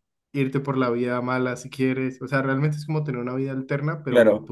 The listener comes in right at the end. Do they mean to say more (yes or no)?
yes